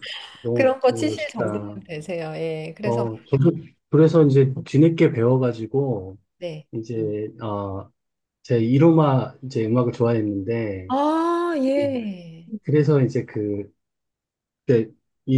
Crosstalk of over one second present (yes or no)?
yes